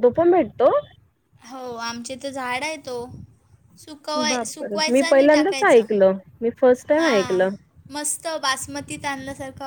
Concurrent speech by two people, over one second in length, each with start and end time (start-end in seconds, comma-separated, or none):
4.3-5.8